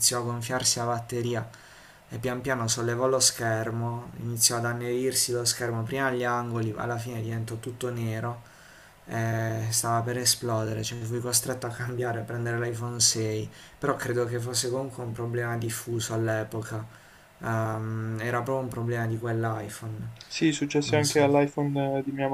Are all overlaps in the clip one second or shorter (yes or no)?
yes